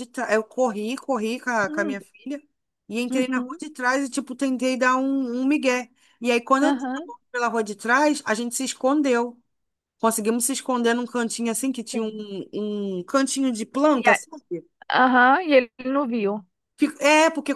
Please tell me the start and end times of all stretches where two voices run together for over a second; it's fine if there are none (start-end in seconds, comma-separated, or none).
none